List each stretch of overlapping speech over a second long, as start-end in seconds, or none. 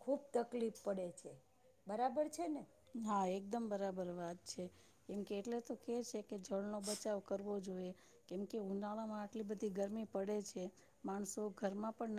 none